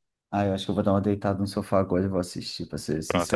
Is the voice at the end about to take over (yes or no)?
yes